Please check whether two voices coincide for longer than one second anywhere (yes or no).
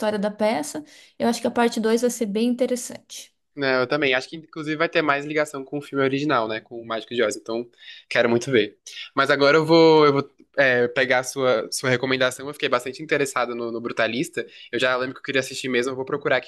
no